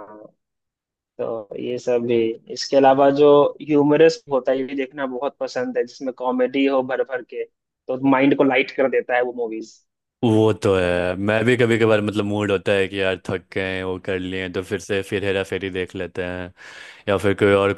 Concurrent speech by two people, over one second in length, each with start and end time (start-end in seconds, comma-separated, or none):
none